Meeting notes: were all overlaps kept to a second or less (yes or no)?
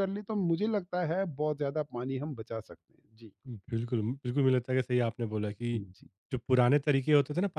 yes